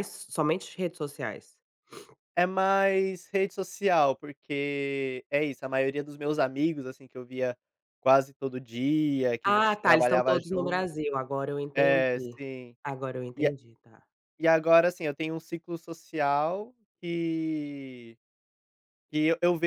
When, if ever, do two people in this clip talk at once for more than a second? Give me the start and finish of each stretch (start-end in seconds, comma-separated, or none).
9.4-10.9